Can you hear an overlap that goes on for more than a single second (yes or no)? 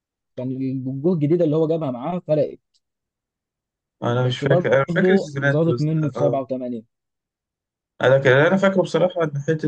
yes